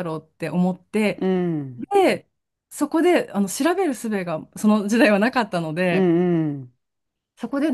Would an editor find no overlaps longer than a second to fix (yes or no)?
yes